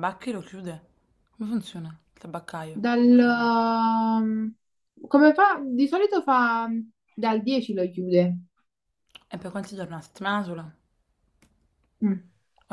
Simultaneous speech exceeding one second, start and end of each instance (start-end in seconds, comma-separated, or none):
none